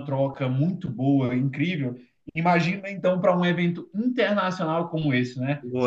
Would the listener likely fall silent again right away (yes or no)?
yes